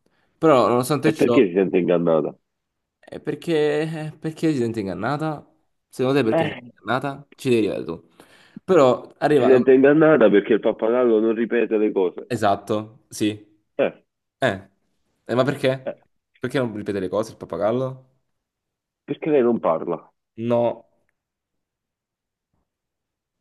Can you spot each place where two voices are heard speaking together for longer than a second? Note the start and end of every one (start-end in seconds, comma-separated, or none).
none